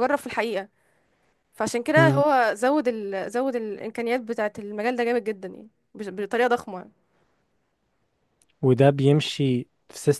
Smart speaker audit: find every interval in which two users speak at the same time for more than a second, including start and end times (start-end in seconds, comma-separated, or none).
none